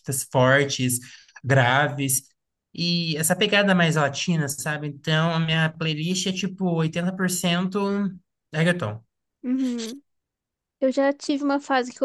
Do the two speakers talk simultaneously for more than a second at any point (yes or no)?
no